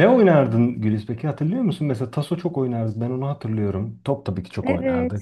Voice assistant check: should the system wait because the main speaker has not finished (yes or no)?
no